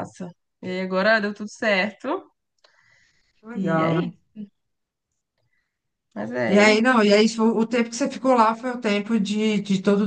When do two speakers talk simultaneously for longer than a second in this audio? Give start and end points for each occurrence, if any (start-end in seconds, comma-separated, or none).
none